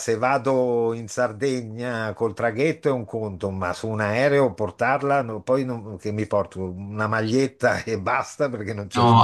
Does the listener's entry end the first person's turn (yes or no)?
yes